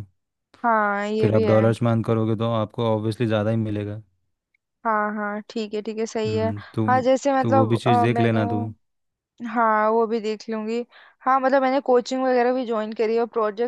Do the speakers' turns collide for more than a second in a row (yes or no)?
yes